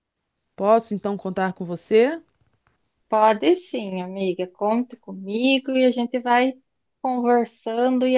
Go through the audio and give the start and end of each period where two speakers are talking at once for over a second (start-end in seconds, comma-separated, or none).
none